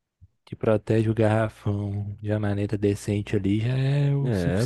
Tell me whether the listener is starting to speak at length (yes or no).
yes